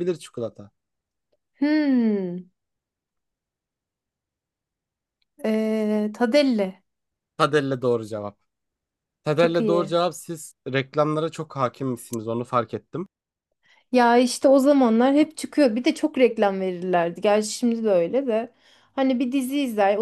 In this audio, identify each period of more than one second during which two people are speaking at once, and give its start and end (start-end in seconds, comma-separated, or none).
none